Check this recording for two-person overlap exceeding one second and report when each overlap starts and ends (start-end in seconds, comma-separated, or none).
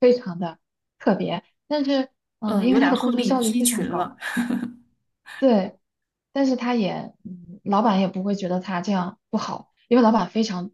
2.4-4.1